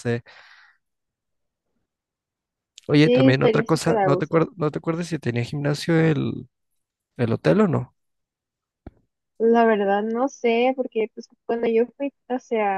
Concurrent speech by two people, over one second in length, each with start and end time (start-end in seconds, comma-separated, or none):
2.9-4.4